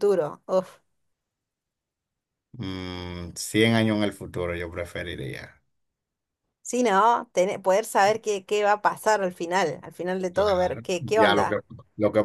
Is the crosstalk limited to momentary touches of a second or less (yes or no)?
no